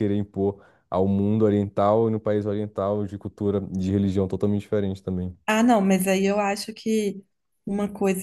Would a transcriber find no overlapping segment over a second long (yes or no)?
yes